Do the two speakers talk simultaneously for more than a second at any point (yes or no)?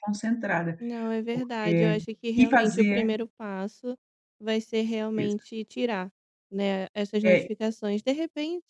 yes